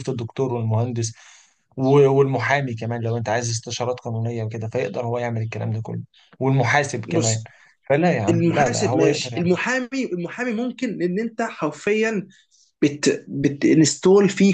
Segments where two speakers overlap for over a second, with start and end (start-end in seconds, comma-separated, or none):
8.3-9.5